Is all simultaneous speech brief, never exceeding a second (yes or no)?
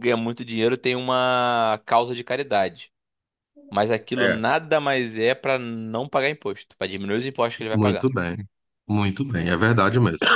yes